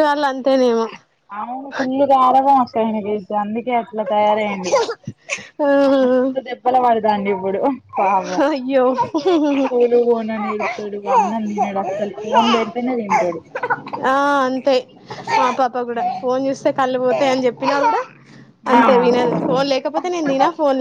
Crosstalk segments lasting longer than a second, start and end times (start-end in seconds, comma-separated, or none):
none